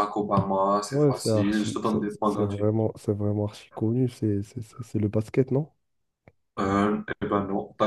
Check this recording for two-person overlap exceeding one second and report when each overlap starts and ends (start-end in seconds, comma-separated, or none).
0.9-2.7